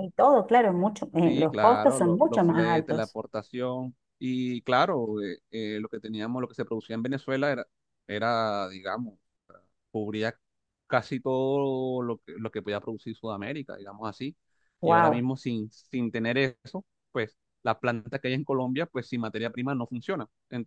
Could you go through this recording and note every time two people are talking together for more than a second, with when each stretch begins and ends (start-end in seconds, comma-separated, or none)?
1.2-3.2